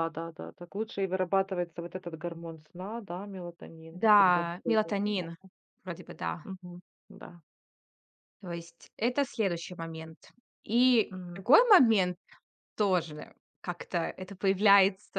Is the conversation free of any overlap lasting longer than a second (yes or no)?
no